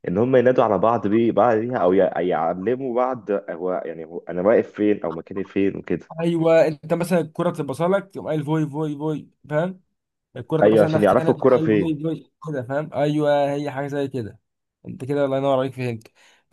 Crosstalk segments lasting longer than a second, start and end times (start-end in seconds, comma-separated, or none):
10.6-12.0